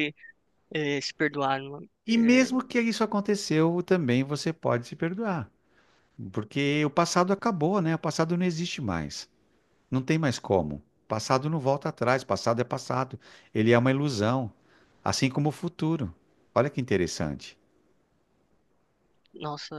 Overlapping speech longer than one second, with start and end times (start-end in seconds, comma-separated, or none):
none